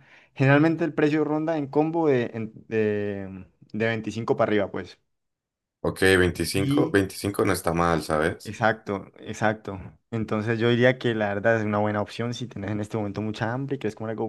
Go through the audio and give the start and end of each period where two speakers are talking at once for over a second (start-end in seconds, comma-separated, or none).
none